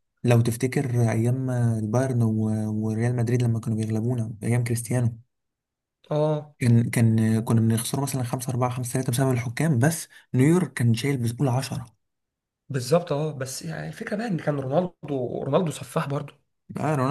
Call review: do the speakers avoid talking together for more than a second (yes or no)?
yes